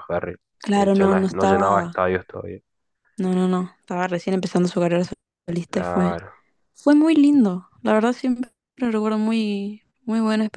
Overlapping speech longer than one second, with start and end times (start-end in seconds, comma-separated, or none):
0.6-1.9